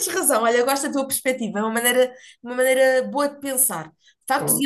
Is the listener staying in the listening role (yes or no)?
yes